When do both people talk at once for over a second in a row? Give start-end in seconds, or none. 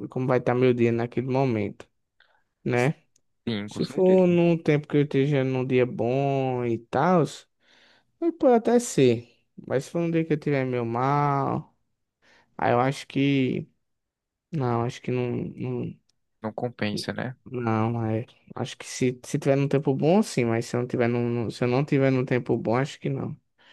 none